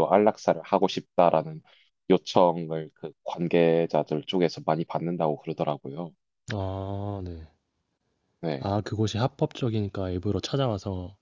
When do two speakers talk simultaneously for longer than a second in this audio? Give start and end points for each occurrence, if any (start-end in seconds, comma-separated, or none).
none